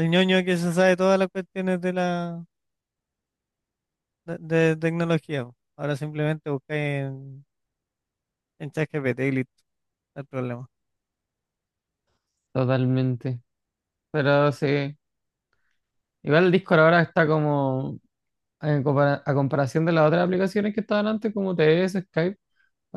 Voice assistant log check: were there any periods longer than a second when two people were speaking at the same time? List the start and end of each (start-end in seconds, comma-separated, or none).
none